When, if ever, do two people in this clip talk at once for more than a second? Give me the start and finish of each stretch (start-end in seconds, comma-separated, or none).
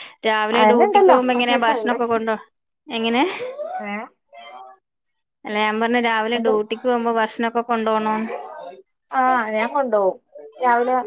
0.6-2.0